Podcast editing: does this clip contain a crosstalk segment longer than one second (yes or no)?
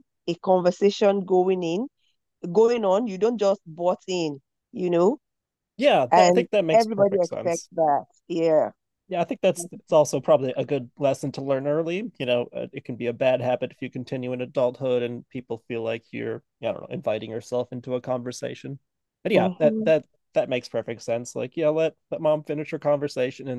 yes